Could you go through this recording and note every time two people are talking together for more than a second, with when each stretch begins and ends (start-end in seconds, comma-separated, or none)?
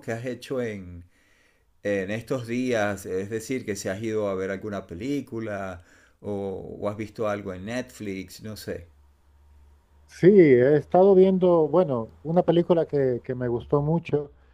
none